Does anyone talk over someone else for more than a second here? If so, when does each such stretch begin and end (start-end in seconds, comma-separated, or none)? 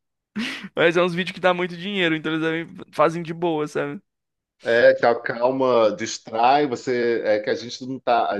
none